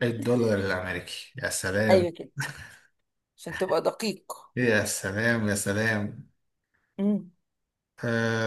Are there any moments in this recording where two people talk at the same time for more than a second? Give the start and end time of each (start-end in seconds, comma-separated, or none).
none